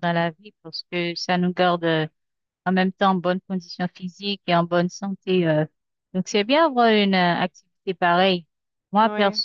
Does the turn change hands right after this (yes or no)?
no